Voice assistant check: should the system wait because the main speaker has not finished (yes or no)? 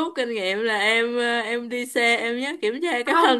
yes